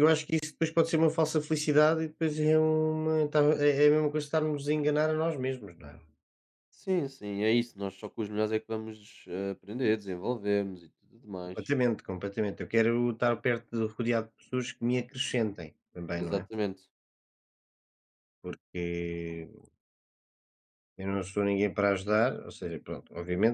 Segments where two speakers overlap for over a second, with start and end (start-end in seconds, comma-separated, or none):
none